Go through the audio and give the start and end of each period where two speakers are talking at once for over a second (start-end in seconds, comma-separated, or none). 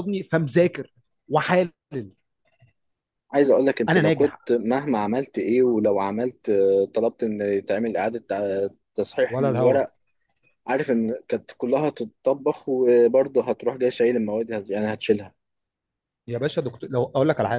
none